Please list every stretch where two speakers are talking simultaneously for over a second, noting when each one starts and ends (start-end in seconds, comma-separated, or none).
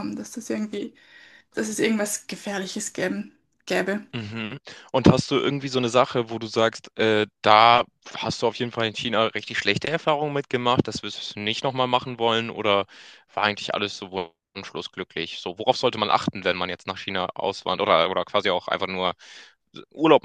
none